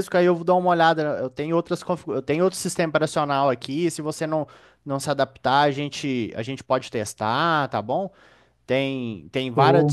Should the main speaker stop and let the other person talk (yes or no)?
no